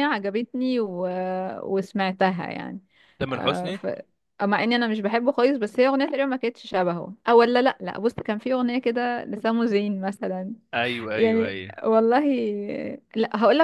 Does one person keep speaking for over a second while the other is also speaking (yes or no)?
no